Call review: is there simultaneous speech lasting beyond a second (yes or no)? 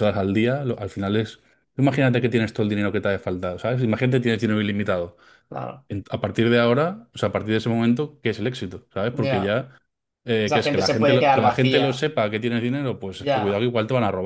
yes